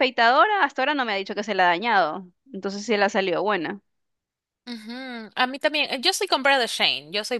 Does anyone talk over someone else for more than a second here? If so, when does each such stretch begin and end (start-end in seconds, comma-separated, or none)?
none